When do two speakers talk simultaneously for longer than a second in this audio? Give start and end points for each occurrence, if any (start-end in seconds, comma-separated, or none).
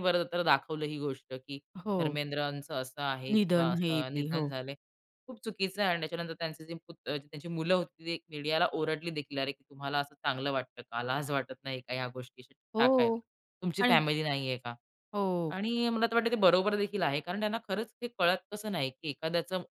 3.3-4.5